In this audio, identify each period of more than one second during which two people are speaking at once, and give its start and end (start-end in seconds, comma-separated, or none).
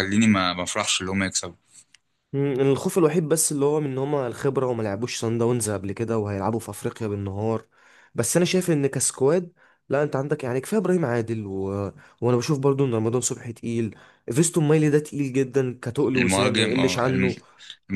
16.1-17.4